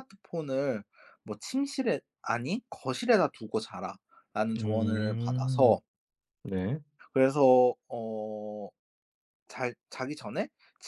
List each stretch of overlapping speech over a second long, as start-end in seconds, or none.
4.6-5.8